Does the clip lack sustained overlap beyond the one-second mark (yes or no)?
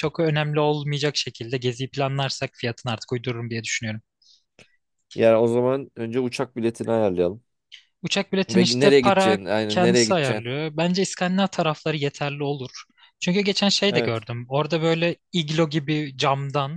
no